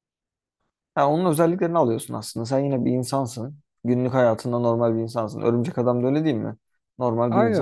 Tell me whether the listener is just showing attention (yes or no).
yes